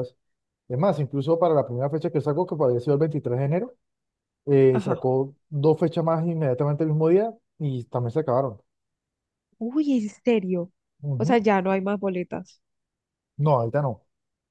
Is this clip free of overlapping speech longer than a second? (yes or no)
yes